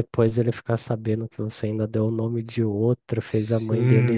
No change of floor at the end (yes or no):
no